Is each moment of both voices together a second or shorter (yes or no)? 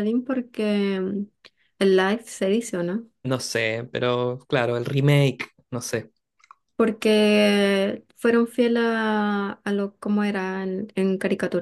yes